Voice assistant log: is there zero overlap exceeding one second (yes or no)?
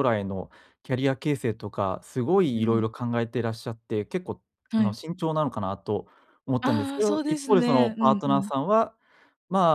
no